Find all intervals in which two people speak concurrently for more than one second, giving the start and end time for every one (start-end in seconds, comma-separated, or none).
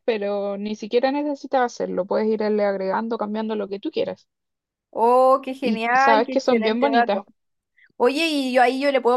5.6-7.2